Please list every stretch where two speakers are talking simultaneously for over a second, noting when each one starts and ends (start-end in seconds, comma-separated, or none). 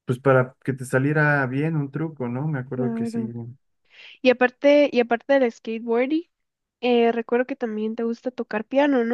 none